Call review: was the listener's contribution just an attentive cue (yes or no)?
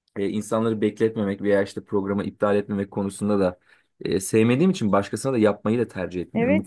no